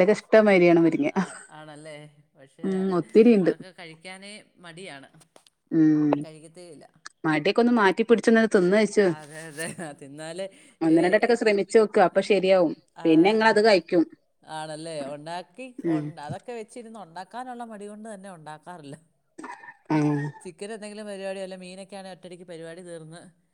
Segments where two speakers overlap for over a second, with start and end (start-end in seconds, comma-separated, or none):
none